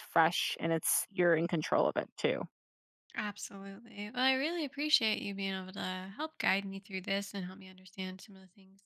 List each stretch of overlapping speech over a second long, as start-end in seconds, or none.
none